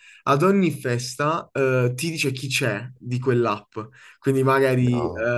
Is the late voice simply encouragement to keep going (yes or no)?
yes